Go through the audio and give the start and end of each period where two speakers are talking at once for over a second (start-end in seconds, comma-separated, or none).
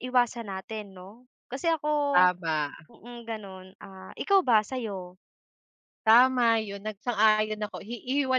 none